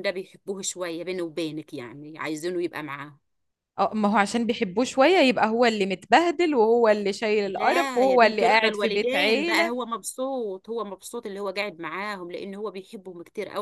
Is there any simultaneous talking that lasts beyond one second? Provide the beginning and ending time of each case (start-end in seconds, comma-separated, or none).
7.4-9.7